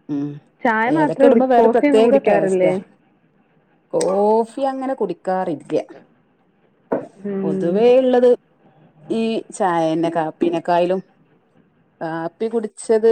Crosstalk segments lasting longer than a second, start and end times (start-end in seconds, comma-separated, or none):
1.0-2.6